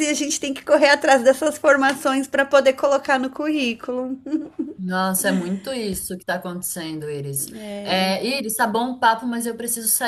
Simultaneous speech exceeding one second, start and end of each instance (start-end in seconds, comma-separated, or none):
none